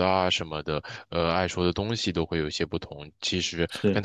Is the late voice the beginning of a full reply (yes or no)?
no